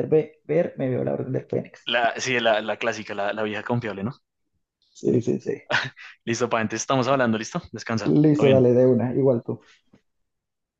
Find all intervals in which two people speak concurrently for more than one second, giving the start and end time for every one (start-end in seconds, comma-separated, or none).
none